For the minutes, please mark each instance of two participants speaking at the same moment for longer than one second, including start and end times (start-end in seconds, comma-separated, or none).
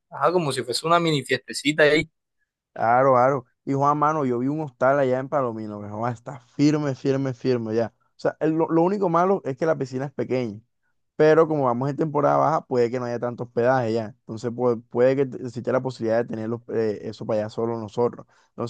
none